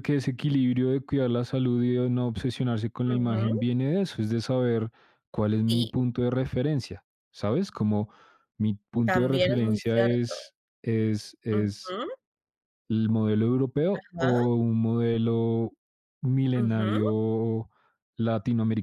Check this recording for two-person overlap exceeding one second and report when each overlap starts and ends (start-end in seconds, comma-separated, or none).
9.0-10.3